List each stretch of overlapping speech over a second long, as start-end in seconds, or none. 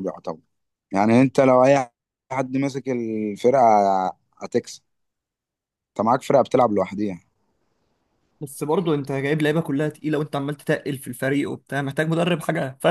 none